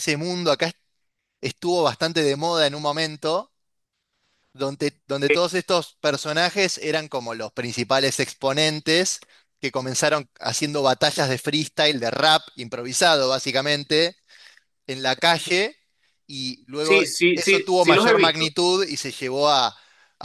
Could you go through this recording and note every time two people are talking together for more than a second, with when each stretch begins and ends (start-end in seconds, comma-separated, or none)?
16.8-18.5